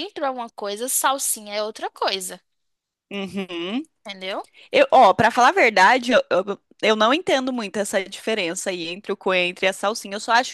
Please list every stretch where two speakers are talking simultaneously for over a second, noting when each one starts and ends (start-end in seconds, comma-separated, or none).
none